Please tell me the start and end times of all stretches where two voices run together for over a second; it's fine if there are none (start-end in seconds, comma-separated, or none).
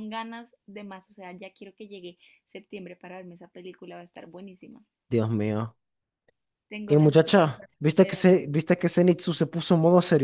6.9-8.3